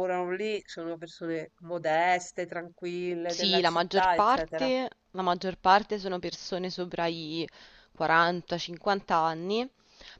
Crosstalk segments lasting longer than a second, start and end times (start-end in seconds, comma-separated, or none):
3.2-4.7